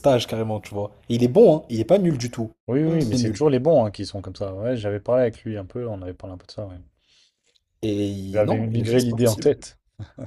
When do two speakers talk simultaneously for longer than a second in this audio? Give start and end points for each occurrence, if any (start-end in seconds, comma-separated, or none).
8.2-9.5